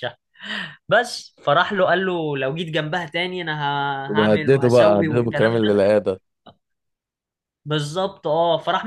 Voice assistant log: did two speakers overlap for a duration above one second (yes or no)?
yes